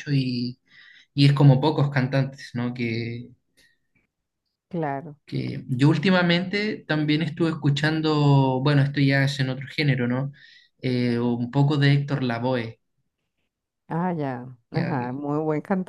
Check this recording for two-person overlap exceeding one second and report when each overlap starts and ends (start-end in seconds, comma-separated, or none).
none